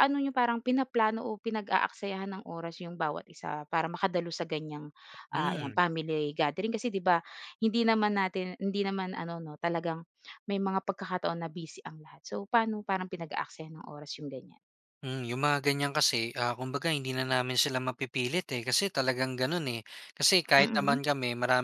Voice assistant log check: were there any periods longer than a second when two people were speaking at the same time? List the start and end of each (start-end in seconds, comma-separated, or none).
none